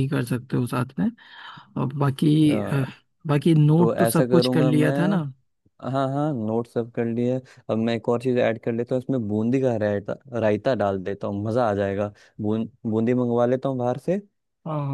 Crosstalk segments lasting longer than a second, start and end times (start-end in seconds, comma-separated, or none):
3.8-5.2